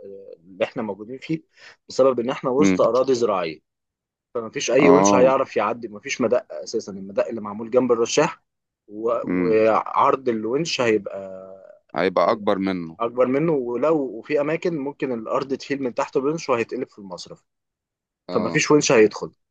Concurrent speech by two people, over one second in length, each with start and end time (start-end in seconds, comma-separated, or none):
none